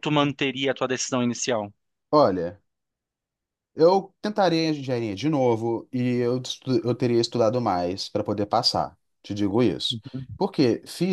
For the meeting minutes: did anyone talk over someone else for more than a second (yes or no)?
no